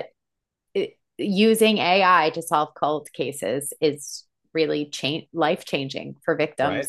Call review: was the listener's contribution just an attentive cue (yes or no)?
no